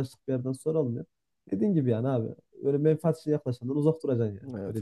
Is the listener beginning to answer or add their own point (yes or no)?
yes